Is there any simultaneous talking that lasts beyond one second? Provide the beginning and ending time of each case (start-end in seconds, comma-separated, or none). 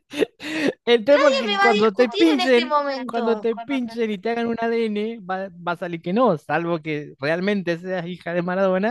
1.2-3.5